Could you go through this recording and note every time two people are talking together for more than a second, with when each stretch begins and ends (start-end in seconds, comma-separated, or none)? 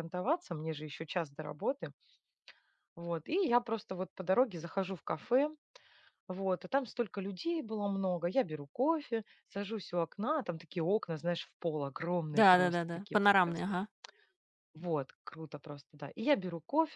12.3-13.8